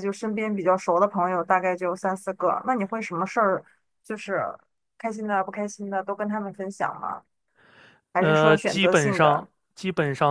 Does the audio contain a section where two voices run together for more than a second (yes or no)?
yes